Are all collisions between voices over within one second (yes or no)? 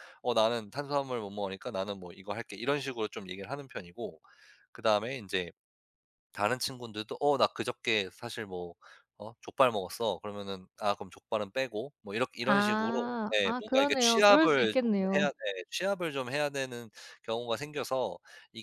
no